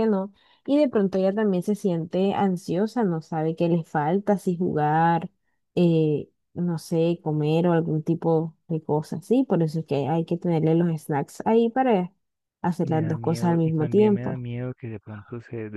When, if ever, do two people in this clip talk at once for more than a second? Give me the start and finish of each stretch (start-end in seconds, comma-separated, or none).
12.8-14.4